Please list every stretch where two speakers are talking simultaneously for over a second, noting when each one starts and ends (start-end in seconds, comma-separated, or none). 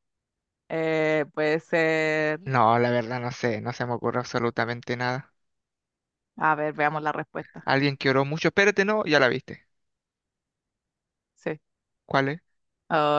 none